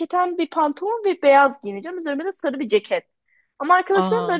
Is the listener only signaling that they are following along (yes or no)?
yes